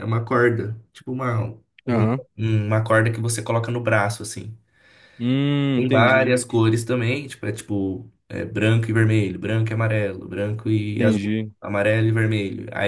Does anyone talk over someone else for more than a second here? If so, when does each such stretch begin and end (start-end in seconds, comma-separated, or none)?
none